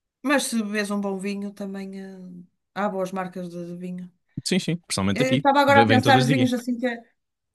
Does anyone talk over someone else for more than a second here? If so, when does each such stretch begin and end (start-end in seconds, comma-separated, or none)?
5.1-6.5